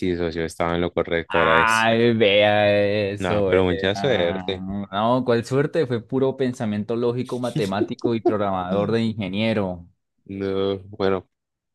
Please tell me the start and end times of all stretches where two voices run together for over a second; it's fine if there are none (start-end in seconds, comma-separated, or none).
3.2-4.4